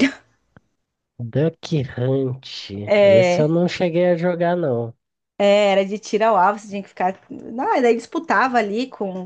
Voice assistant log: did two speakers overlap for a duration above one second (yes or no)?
no